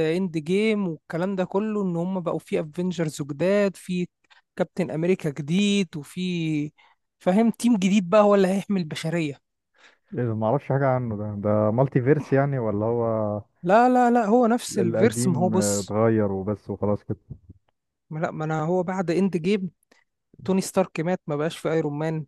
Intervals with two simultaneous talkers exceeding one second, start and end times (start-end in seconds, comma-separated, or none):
14.7-15.9